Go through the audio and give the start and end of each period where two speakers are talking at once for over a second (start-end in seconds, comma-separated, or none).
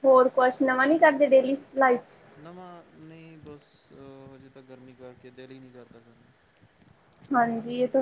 none